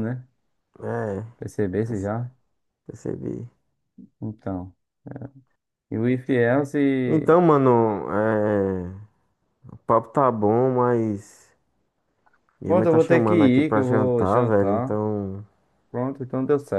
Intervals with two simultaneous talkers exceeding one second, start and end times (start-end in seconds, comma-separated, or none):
12.7-15.0